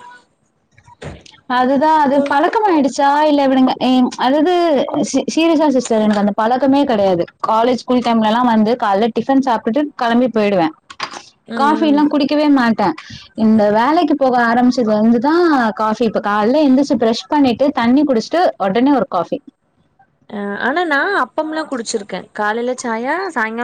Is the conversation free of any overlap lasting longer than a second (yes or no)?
yes